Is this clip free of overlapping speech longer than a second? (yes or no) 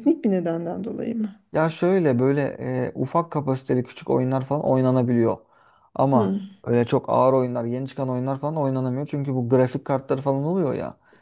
yes